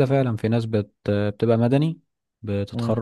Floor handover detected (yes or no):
yes